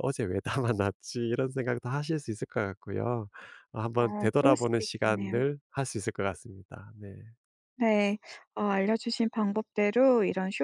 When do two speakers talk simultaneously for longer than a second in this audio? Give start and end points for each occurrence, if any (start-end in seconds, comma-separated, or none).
3.9-5.4